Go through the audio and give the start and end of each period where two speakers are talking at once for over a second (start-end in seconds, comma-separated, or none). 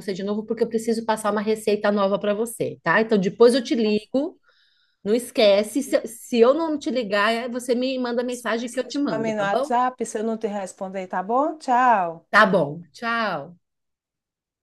8.3-9.7